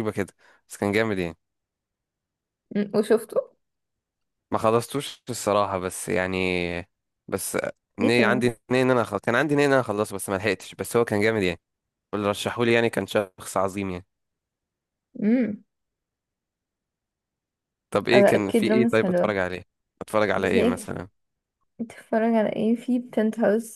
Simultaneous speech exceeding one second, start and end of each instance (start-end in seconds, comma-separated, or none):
18.1-19.4